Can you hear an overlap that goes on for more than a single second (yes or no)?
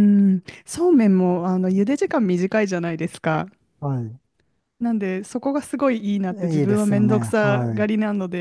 yes